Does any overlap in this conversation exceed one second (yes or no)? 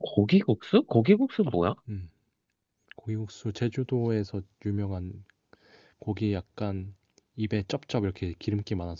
no